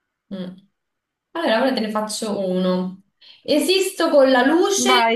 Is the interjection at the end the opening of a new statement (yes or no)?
no